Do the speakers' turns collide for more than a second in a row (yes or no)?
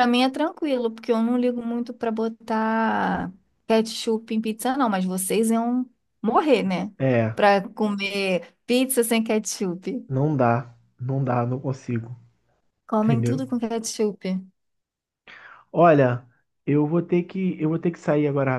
no